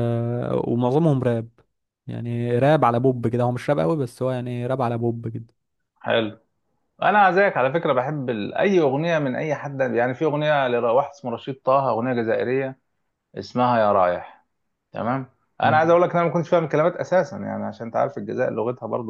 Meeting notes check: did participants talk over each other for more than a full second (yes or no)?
no